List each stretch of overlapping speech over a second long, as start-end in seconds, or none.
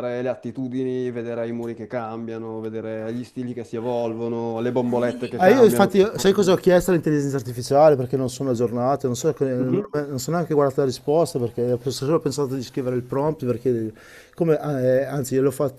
5.4-6.6